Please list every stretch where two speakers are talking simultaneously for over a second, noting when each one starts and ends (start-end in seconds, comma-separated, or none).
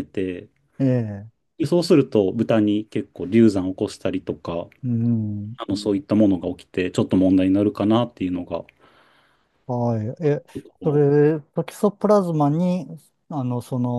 none